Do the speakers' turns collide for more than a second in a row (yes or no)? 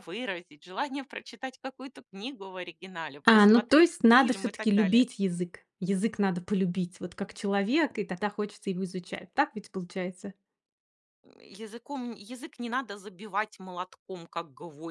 yes